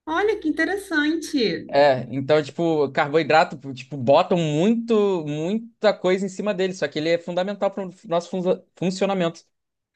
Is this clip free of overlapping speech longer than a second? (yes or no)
yes